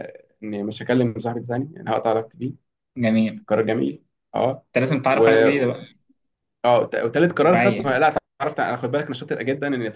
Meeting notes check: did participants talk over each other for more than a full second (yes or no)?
no